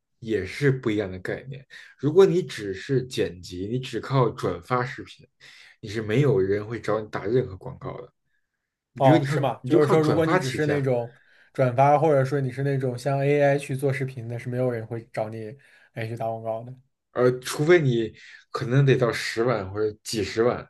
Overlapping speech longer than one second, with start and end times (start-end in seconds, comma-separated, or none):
9.0-10.9